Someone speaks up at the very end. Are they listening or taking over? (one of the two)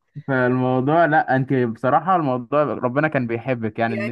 taking over